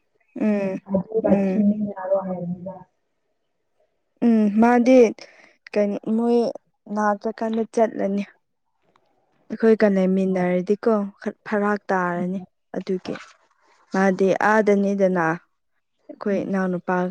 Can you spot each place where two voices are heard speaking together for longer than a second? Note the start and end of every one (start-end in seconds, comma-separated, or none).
none